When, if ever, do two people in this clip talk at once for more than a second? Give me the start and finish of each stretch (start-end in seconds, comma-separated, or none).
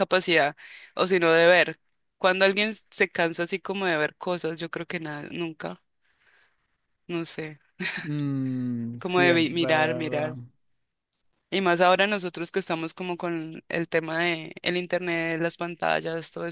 9.0-10.3